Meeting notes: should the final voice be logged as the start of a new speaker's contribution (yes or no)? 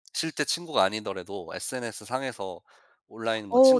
yes